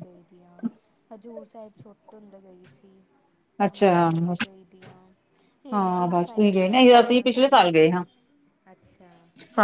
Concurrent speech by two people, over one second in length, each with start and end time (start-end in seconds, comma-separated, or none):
5.7-8.0